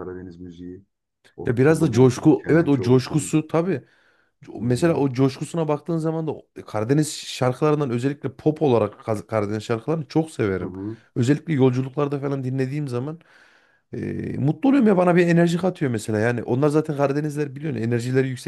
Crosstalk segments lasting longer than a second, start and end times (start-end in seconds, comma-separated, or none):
1.5-3.3